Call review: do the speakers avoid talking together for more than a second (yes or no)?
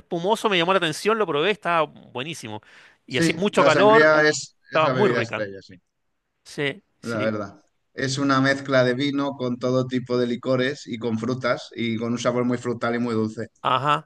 no